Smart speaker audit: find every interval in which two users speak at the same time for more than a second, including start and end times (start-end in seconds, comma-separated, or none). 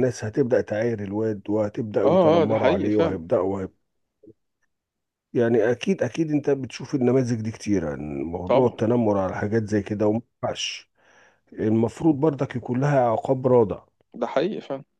2.0-3.3